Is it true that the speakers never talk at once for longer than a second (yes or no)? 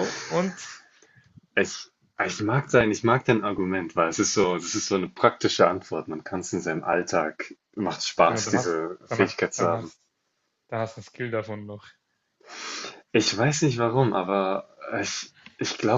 no